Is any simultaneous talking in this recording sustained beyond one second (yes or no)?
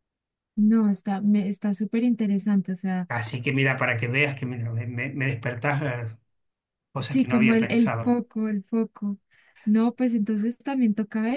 yes